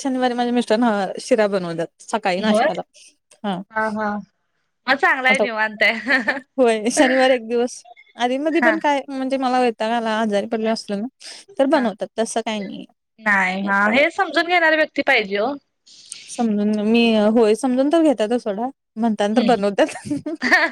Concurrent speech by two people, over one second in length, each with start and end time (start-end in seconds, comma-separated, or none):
none